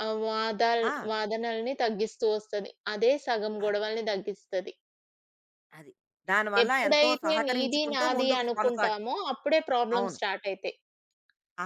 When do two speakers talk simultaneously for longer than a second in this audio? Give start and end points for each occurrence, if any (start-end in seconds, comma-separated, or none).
6.6-8.9